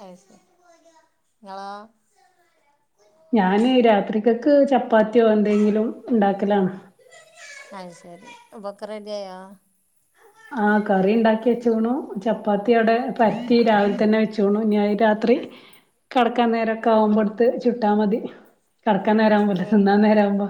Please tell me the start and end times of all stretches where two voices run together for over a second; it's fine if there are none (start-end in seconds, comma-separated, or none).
none